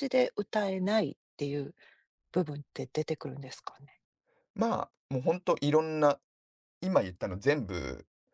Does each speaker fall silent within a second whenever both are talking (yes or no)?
yes